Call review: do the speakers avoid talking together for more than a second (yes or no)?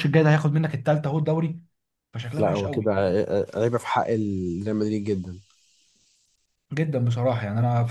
yes